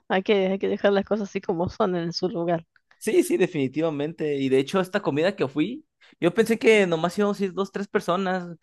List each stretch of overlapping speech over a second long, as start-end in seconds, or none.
none